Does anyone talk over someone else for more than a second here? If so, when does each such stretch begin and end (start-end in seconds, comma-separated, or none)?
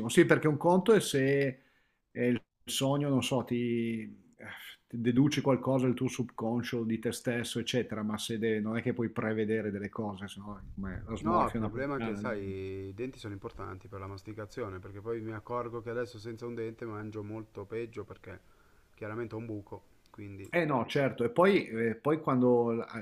11.2-12.6